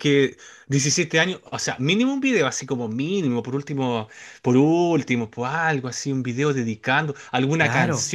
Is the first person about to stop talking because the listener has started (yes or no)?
no